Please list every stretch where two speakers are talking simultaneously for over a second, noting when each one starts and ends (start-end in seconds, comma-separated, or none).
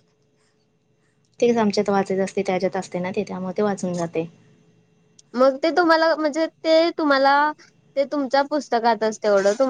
none